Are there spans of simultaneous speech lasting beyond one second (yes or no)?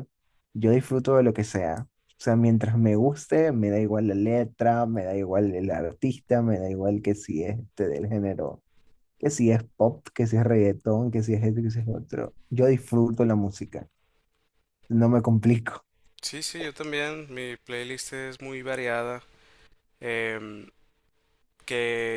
no